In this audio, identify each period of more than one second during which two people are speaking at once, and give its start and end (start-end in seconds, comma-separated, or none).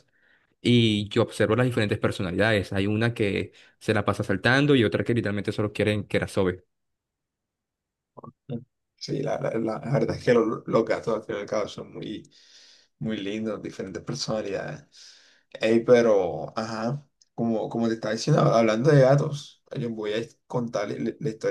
none